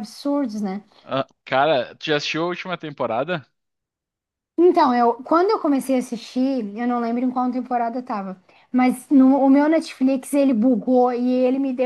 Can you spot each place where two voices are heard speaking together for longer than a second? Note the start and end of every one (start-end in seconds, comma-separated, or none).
none